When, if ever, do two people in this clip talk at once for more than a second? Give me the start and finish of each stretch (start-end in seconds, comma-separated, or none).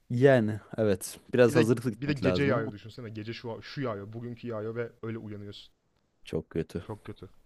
1.5-2.7